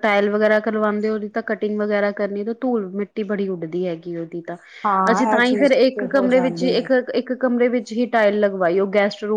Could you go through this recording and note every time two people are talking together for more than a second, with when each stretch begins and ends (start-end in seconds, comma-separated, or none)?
5.1-6.9